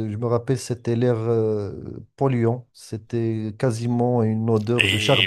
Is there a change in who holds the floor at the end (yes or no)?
yes